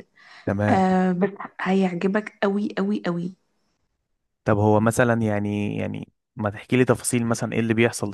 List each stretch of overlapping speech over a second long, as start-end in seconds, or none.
none